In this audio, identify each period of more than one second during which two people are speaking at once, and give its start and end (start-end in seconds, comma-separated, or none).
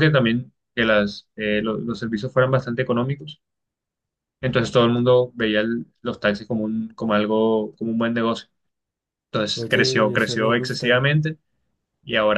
9.6-11.1